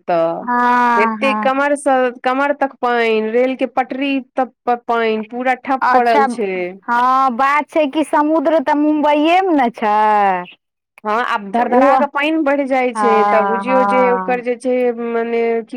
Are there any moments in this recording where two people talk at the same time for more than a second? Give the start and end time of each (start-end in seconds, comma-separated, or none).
13.0-14.4